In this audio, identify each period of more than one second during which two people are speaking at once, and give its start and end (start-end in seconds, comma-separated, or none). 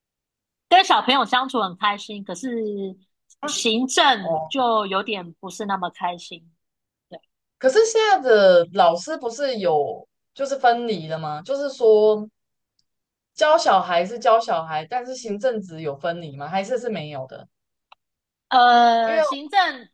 none